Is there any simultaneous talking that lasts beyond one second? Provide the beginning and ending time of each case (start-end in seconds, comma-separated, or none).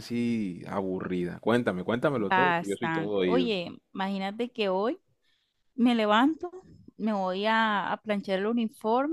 2.2-3.5